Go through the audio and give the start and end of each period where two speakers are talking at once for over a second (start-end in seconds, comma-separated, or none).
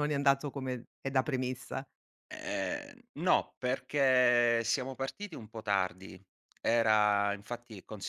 none